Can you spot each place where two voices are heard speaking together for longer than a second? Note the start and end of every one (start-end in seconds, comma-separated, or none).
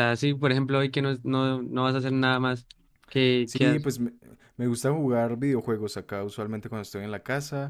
none